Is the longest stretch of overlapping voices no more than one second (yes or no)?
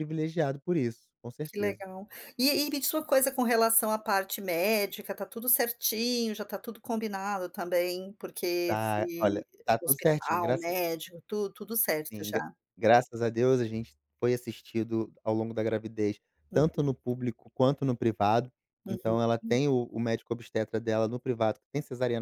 no